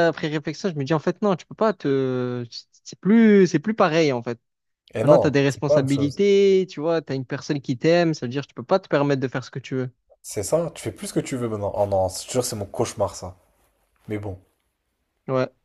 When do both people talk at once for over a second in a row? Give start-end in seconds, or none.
5.0-6.2